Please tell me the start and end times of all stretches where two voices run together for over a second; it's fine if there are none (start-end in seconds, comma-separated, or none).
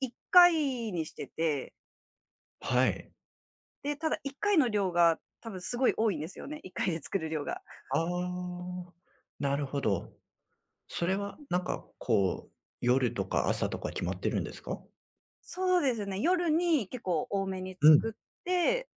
none